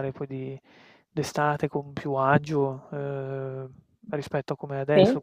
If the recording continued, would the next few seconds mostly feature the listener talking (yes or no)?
no